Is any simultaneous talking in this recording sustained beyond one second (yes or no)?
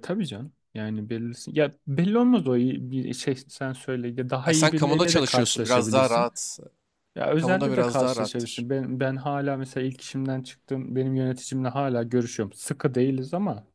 yes